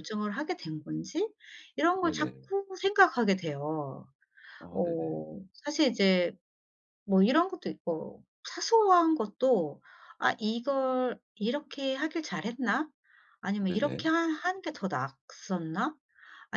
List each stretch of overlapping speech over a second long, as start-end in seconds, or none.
none